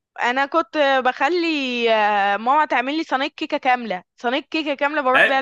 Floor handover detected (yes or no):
yes